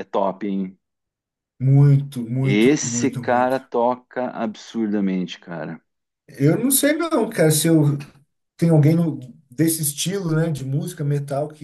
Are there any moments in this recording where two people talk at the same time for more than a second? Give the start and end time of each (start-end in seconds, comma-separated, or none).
2.4-3.7